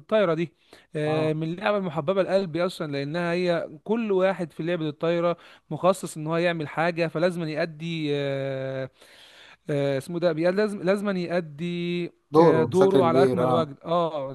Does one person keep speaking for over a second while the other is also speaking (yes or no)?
yes